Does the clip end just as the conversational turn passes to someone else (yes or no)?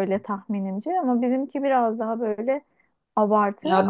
yes